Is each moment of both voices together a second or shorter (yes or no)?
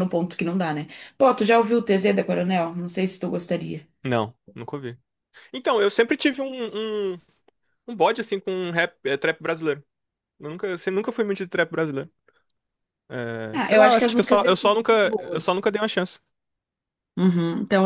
no